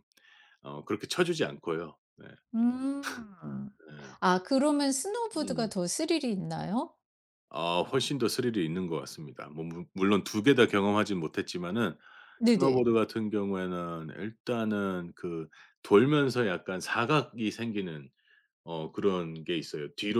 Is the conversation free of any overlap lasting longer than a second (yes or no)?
yes